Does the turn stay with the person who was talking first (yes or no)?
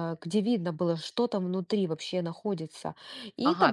no